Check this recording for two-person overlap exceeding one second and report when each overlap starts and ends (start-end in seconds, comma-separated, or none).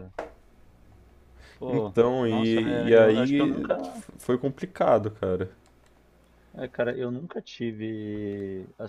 1.7-3.7